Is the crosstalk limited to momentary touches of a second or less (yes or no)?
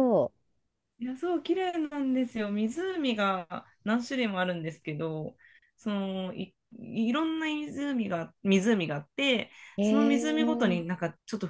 no